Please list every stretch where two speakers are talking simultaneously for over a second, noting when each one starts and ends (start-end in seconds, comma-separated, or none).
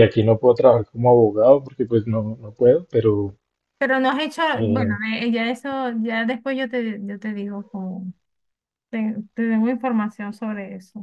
none